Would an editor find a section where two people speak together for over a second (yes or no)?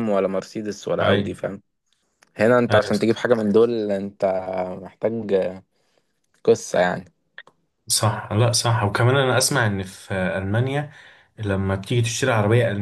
no